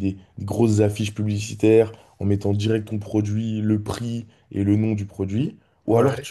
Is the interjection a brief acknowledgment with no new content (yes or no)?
yes